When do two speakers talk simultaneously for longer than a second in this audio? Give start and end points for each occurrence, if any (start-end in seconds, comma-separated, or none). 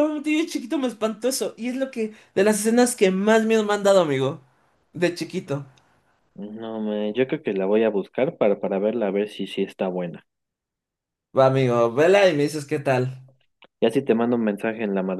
none